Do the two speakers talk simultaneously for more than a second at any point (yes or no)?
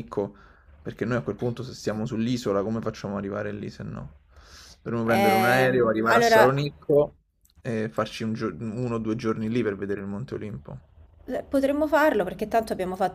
yes